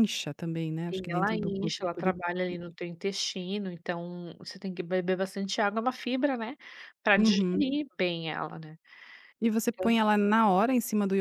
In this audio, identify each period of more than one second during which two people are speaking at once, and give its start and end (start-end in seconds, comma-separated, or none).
0.9-2.1